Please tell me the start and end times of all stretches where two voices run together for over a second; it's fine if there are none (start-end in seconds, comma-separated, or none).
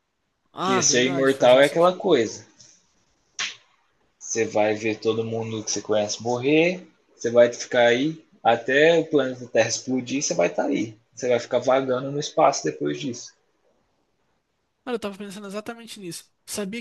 0.6-2.1